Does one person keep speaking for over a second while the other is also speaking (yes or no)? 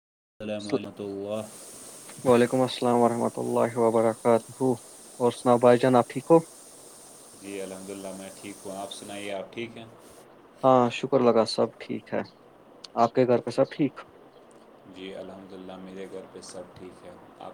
no